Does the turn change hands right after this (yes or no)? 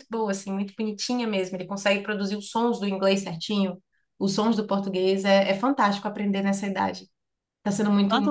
yes